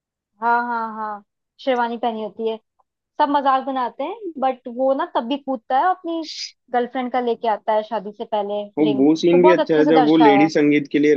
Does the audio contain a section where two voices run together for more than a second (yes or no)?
yes